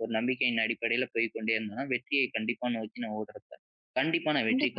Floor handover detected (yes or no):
yes